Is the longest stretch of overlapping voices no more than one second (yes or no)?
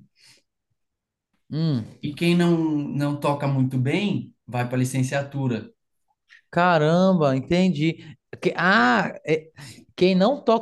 yes